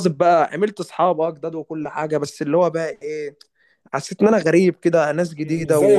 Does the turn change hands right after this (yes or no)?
yes